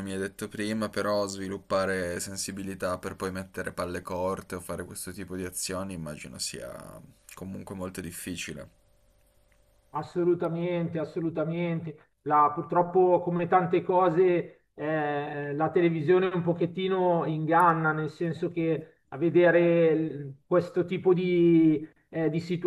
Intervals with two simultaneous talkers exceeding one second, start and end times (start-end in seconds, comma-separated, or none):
none